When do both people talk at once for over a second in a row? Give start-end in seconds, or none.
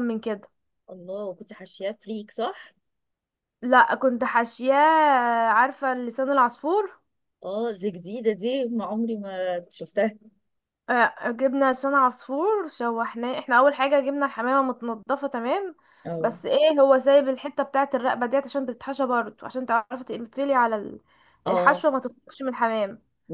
none